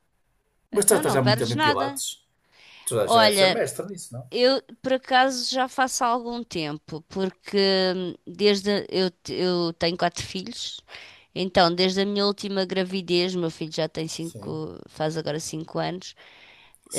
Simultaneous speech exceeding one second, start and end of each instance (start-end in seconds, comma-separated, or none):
0.7-2.0